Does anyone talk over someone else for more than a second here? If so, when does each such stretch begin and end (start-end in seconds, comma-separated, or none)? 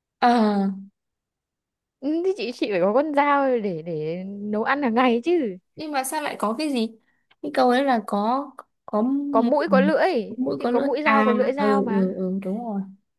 10.6-12.2